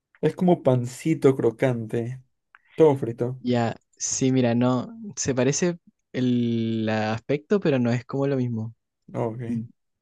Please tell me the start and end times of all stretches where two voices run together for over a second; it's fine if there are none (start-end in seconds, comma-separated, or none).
none